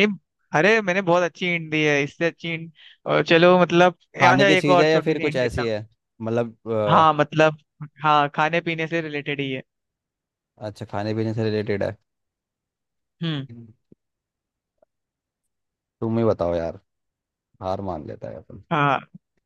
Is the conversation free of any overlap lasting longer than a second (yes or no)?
no